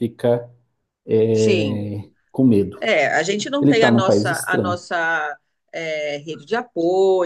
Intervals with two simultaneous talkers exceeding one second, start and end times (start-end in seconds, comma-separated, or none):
3.6-4.8